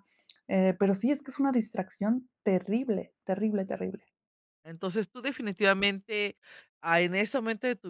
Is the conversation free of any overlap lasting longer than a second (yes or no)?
yes